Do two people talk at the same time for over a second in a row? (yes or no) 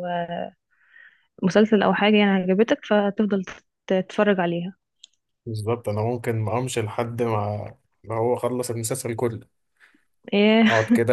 no